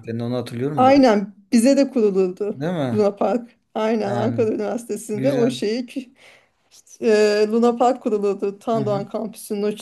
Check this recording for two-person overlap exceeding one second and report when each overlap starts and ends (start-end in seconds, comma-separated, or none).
none